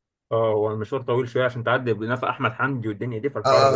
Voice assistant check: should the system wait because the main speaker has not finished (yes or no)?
no